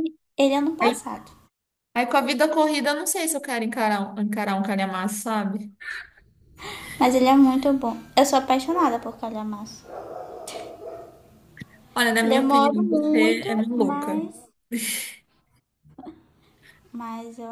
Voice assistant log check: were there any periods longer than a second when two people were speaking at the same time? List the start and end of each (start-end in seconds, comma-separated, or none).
12.2-14.2